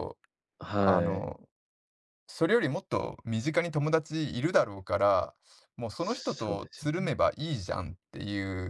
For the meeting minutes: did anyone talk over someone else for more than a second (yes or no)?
yes